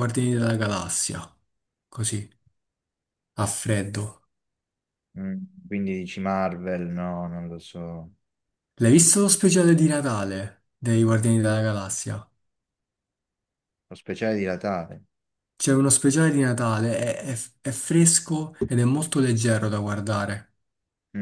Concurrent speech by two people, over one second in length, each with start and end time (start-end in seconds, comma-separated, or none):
none